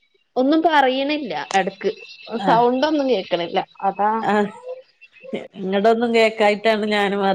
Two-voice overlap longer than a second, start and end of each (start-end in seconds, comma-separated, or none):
none